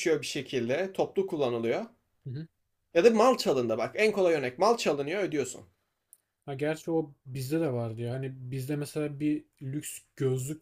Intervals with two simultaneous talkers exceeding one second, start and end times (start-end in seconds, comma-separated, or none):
none